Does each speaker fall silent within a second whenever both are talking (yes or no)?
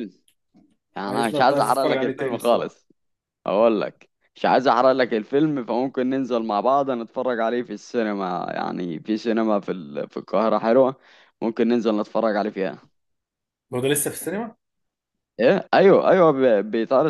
no